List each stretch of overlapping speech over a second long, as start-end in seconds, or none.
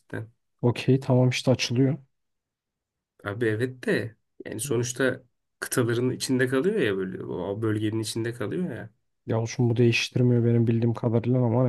none